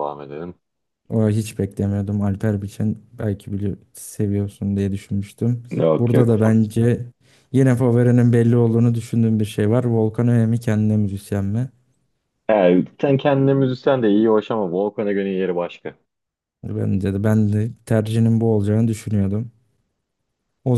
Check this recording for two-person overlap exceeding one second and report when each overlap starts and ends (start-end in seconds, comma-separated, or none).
none